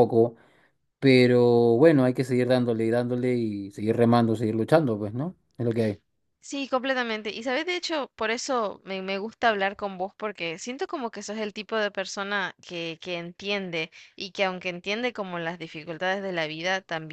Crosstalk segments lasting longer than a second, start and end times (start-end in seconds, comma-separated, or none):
none